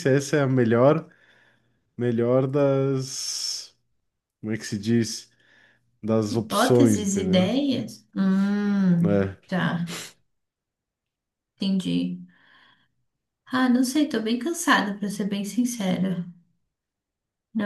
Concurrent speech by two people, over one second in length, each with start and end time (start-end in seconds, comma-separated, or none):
6.3-7.5